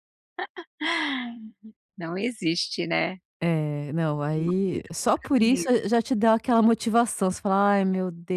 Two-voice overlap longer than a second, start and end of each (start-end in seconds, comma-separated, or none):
4.3-5.8